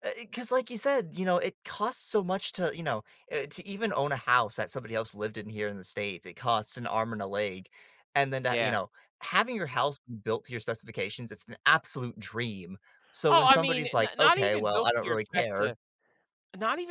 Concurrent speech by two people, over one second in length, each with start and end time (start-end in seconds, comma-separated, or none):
13.3-15.7